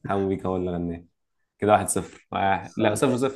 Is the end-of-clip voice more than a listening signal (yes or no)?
no